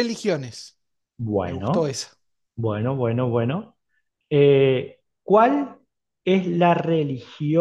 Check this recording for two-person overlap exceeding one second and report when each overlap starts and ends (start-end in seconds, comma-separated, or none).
none